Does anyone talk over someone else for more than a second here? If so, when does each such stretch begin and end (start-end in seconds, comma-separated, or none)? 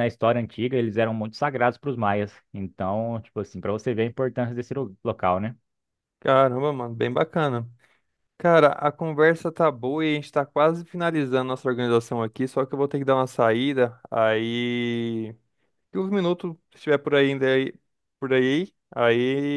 none